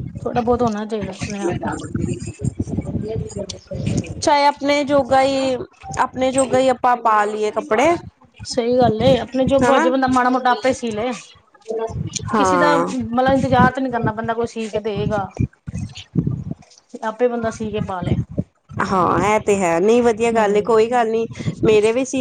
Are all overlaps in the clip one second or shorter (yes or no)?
yes